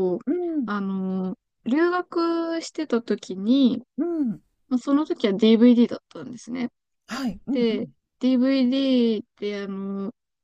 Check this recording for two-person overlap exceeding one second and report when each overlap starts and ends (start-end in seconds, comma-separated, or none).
none